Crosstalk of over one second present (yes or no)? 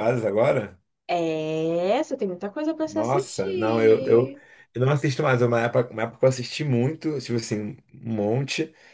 yes